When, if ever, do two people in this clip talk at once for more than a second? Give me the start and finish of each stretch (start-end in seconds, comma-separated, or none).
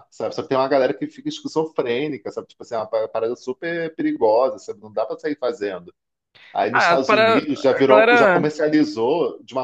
6.7-8.6